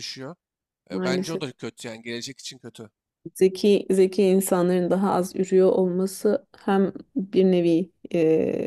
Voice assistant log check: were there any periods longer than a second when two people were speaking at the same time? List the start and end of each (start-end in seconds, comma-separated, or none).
none